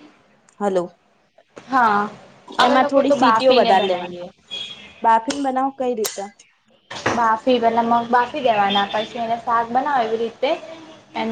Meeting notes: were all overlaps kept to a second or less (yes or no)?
no